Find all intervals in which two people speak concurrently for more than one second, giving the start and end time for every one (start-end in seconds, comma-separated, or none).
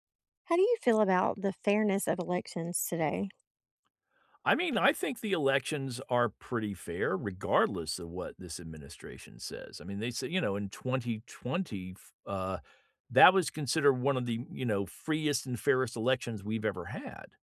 none